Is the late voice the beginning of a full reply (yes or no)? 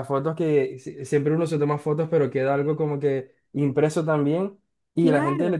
no